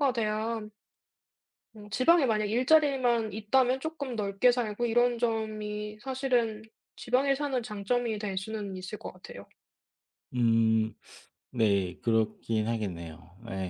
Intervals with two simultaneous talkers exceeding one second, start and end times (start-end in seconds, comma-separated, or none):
none